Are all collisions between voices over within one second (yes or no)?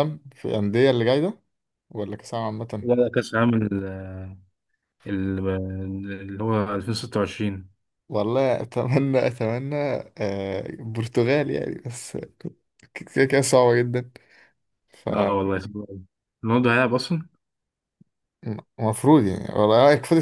yes